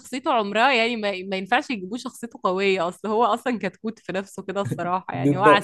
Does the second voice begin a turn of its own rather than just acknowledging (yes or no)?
yes